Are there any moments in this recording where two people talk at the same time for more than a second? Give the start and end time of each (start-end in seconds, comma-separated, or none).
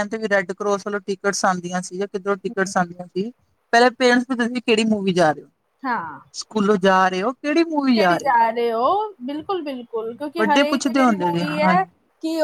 10.4-11.7